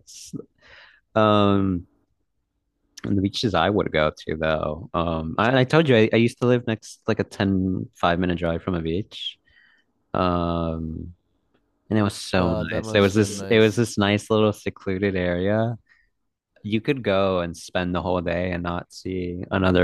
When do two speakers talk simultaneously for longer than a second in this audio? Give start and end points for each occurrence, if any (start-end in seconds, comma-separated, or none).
12.3-13.8